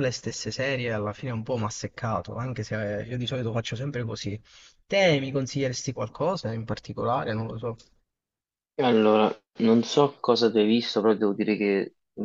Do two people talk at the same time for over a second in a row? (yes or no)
no